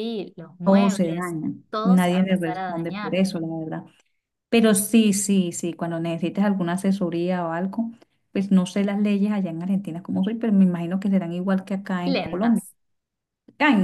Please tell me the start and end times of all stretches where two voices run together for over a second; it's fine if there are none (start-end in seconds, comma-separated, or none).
0.6-3.2